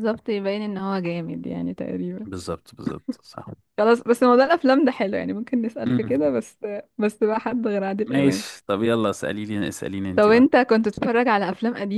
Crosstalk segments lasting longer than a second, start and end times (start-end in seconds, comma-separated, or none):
none